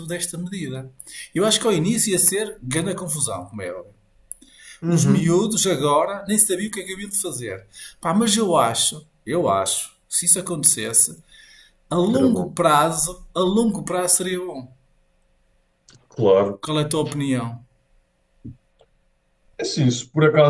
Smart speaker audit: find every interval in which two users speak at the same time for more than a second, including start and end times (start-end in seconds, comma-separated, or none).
none